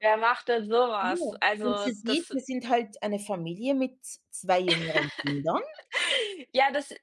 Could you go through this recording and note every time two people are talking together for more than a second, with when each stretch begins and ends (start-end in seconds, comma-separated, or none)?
1.0-2.4